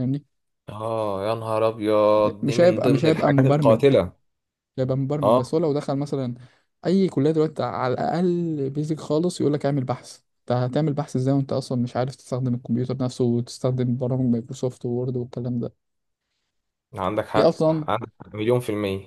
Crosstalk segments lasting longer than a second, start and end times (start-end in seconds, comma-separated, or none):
2.4-3.8